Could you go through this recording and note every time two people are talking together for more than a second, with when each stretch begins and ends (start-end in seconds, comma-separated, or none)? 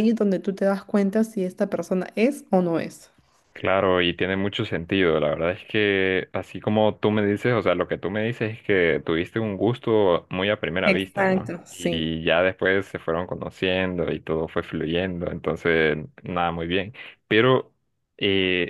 10.8-12.1